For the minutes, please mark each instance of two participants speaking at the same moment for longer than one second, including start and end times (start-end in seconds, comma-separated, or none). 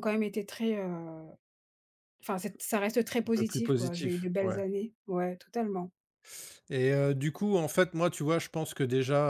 3.2-4.6